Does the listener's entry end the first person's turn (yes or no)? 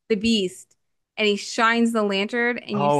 yes